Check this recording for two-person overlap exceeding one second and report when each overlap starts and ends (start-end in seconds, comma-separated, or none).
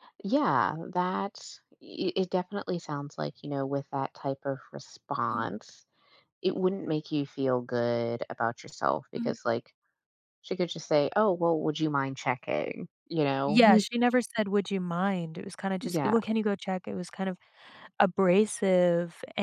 none